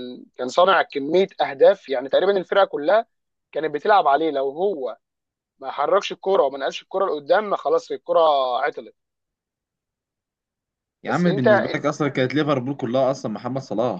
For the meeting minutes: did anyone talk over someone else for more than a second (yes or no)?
no